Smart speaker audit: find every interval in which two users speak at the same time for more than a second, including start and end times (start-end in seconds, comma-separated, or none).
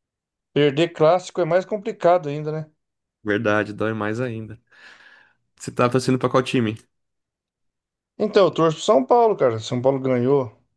none